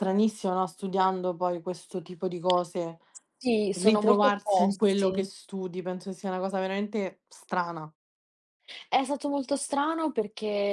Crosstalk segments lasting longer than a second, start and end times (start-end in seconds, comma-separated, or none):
3.7-5.2